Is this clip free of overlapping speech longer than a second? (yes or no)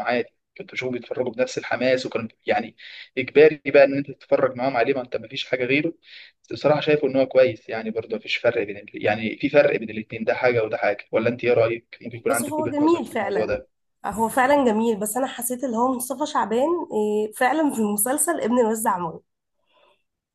no